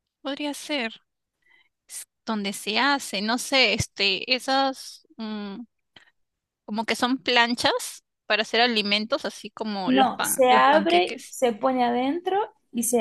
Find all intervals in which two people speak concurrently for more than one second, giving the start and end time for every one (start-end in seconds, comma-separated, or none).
9.8-11.4